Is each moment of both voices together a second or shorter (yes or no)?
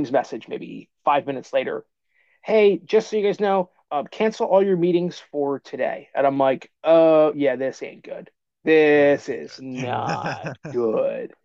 no